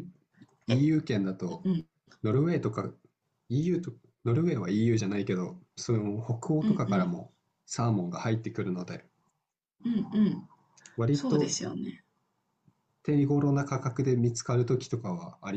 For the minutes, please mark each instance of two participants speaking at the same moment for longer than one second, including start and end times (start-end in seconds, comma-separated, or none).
none